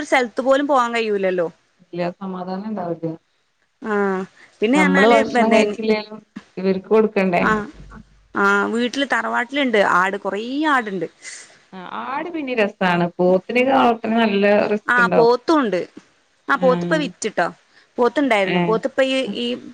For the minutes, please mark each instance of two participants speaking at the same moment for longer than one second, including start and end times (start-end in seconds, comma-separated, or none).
none